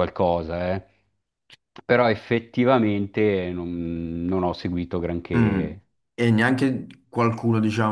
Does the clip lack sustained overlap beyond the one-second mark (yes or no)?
yes